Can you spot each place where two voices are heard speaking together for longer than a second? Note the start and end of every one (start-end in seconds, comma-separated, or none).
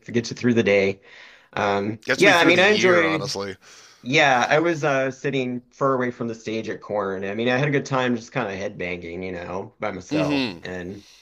2.0-3.4